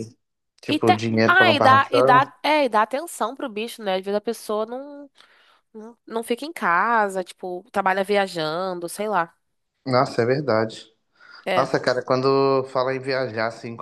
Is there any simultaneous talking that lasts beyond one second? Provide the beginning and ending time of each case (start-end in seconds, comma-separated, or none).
0.7-2.3